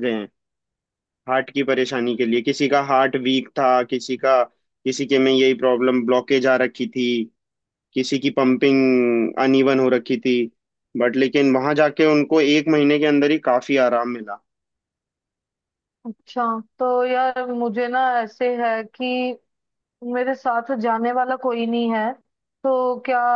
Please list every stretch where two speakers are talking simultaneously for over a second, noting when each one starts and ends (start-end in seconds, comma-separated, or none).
none